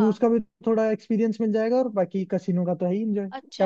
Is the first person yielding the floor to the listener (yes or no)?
yes